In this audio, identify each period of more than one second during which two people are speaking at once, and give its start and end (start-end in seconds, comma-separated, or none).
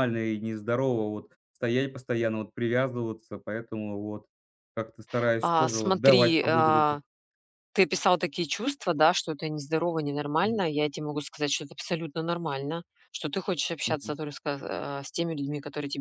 5.4-7.0